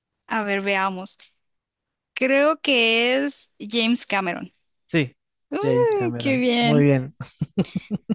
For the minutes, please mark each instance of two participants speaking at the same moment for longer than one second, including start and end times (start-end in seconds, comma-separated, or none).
5.6-6.9